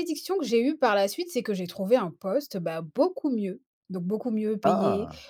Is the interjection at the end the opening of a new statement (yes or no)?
no